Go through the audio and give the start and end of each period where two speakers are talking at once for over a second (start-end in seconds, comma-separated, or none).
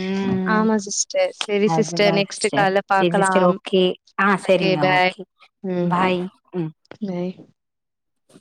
1.8-3.6